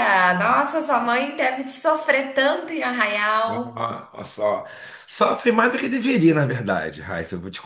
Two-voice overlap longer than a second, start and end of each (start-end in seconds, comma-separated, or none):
none